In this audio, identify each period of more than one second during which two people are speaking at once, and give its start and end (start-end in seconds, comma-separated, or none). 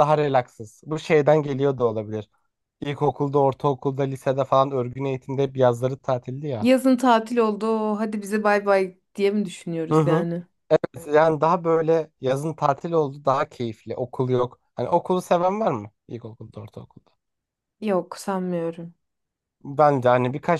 none